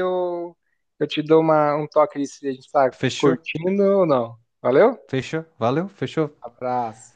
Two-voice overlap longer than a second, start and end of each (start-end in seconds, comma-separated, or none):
none